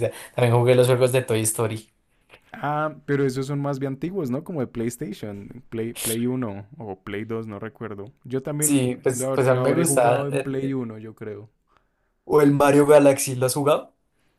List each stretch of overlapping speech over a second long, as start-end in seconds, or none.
8.6-10.7